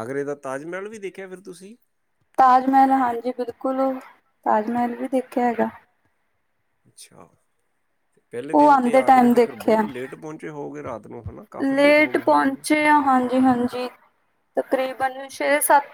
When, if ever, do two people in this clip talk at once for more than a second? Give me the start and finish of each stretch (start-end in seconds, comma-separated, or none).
8.5-9.9